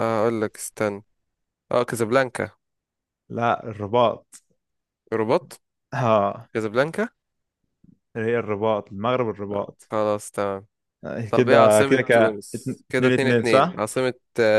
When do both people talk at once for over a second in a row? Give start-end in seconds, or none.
11.3-13.8